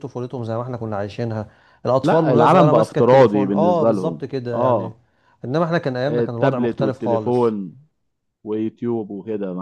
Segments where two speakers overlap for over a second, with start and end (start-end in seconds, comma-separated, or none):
2.0-4.9, 6.1-7.5